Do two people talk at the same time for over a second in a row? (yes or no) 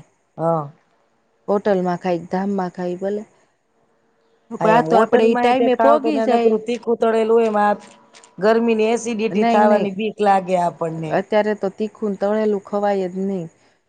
yes